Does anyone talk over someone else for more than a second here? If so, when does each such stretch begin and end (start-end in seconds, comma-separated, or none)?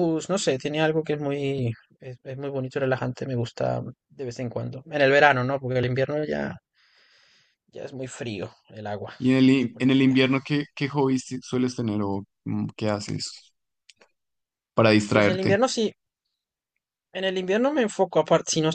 none